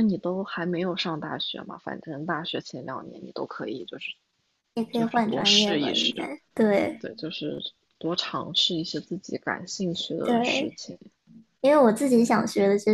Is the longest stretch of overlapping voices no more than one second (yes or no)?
no